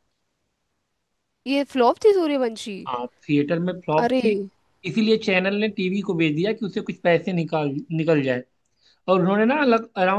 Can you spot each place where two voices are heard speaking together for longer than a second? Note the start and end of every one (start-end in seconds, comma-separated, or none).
none